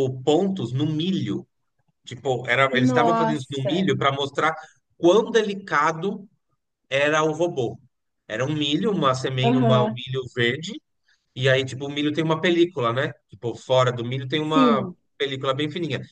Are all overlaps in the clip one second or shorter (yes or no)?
no